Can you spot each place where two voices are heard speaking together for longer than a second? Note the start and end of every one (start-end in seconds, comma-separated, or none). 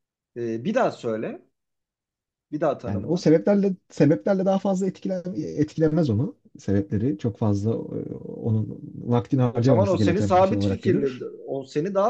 9.5-11.2